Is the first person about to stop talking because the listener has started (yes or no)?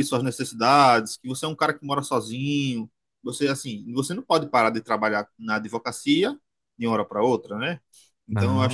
no